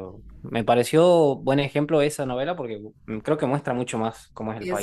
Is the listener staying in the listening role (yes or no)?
no